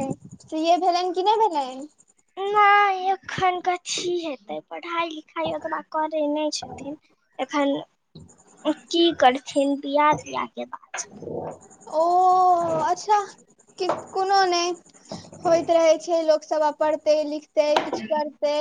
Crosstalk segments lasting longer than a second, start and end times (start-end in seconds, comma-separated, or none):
none